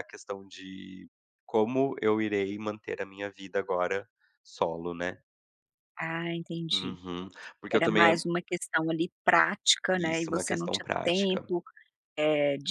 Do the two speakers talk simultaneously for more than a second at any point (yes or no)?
yes